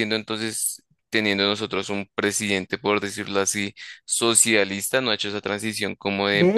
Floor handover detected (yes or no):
yes